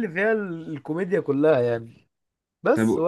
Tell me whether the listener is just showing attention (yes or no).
yes